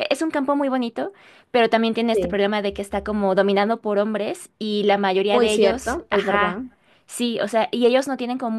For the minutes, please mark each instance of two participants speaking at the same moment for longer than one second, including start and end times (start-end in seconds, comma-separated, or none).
5.3-6.6